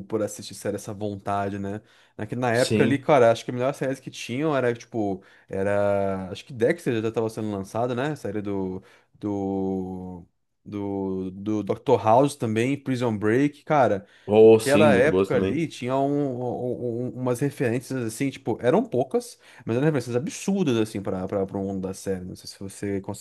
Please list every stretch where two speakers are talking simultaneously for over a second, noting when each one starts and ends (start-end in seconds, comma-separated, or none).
14.4-15.6